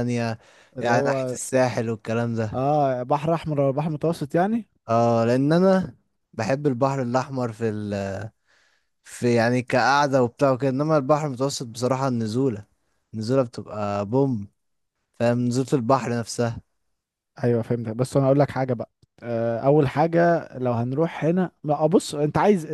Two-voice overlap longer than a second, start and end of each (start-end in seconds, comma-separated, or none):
none